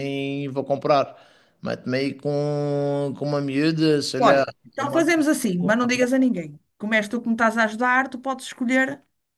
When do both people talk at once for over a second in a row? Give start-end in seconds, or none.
4.2-6.2